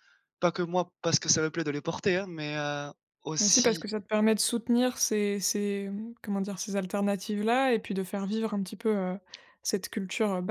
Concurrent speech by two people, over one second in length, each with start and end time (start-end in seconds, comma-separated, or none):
none